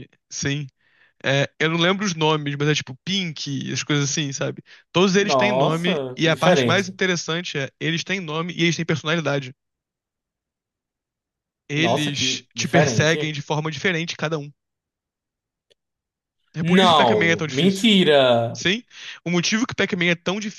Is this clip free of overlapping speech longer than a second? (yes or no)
no